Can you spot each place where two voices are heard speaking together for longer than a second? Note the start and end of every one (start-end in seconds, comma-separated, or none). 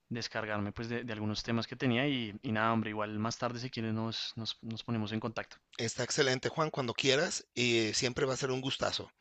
none